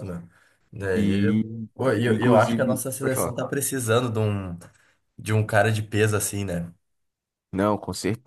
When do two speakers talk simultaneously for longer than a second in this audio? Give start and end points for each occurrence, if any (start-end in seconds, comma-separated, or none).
2.1-3.4